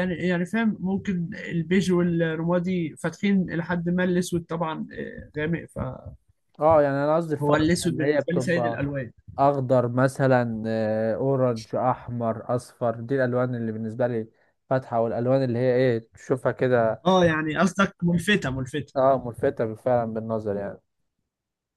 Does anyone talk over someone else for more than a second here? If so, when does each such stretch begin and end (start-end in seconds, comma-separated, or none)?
7.4-8.8